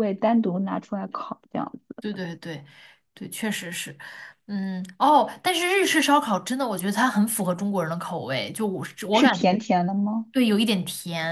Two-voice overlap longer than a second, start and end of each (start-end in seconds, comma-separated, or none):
none